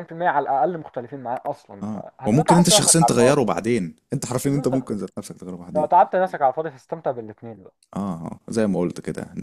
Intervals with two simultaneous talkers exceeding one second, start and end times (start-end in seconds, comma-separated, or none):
1.8-3.5